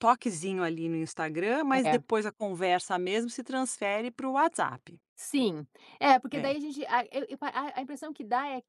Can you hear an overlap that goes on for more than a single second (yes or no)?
no